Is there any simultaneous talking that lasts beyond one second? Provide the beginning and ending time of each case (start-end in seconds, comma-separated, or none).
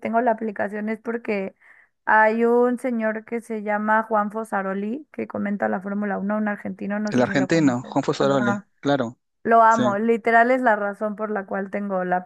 7.1-8.7